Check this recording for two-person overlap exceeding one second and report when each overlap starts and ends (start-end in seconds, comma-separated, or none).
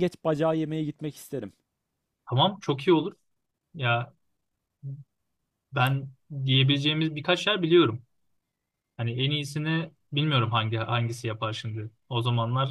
none